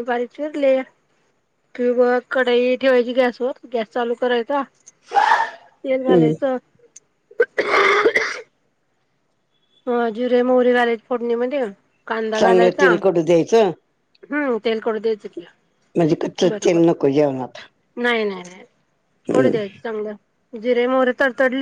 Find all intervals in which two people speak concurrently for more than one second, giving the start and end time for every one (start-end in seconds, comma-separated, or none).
none